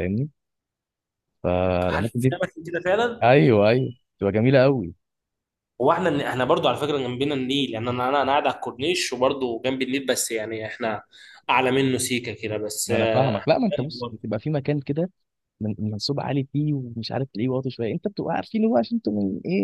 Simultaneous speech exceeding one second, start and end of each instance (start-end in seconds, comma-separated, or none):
none